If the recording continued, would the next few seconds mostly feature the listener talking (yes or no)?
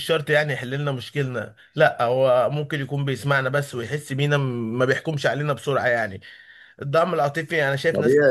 yes